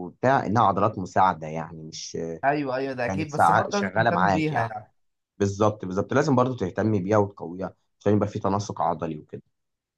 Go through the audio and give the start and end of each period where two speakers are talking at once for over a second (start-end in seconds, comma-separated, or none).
3.1-4.7